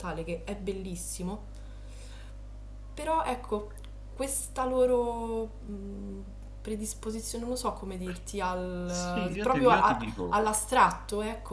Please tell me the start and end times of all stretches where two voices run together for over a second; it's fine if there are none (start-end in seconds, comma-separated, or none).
8.8-10.4